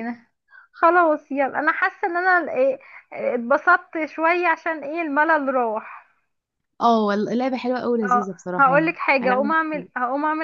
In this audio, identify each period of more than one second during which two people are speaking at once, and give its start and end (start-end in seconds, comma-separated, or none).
8.0-9.9